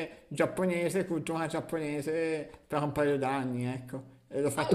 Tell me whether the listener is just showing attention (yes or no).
no